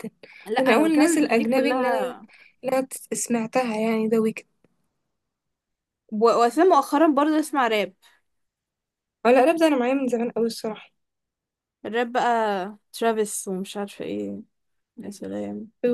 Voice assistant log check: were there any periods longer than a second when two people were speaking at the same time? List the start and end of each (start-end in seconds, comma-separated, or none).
0.6-2.1